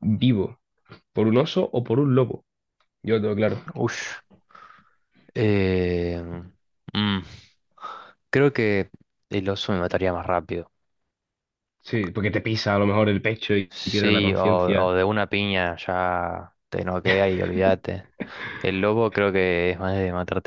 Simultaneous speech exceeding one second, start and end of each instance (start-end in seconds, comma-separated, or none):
13.7-14.9